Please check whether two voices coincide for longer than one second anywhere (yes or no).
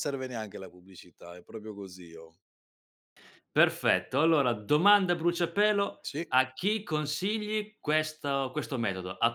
no